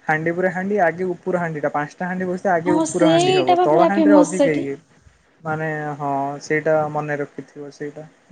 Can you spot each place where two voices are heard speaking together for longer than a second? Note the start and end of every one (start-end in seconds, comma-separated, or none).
2.7-4.6